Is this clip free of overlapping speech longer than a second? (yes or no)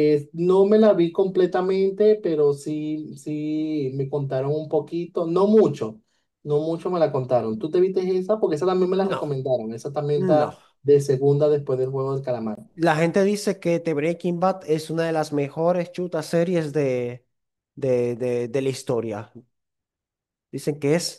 yes